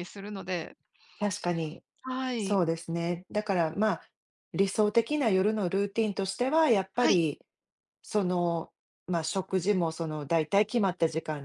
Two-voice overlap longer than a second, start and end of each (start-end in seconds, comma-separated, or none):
none